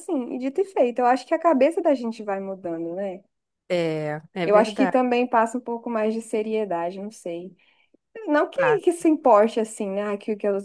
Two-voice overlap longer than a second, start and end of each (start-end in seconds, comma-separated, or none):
none